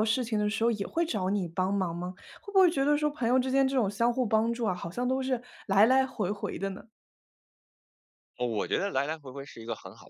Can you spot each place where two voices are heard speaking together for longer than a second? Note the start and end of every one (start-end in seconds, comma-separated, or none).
none